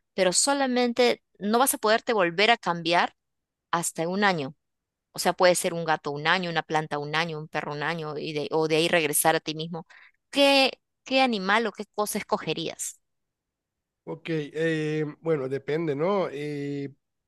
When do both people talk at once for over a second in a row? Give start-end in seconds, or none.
none